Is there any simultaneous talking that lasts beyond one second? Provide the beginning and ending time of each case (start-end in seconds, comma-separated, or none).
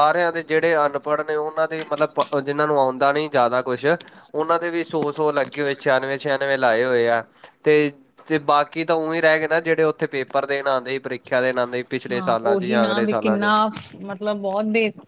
none